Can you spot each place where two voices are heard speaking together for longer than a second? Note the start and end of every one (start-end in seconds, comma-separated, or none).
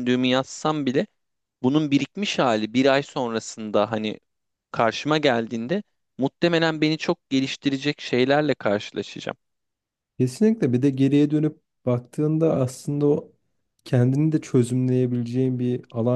none